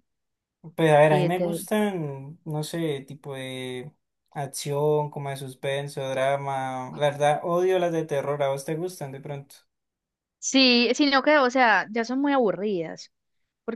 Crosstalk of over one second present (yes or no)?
no